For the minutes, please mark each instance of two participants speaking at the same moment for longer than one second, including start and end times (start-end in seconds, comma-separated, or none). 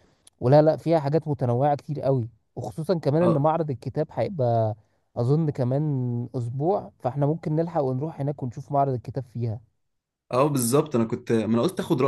none